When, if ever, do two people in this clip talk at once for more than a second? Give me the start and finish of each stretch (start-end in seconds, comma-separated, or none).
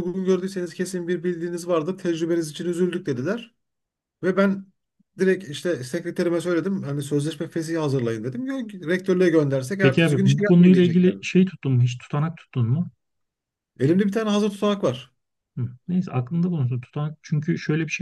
9.8-11.2